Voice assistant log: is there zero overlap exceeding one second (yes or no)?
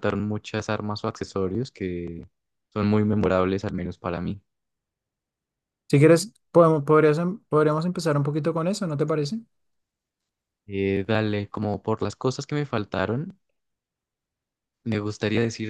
yes